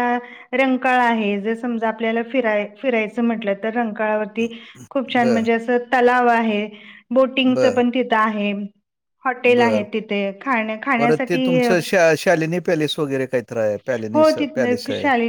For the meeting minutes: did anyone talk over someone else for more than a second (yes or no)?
no